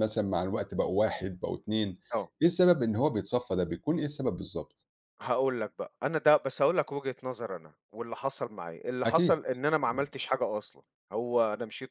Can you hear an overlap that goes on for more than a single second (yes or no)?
no